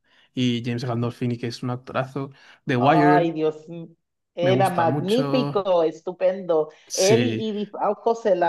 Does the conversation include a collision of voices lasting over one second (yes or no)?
yes